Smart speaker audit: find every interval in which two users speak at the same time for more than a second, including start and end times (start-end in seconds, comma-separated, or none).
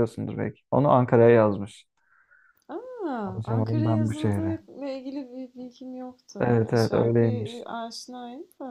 3.2-4.6, 6.4-7.7